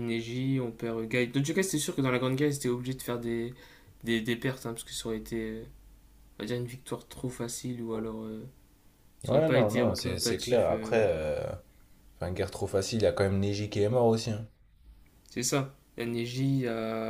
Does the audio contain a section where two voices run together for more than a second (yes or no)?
yes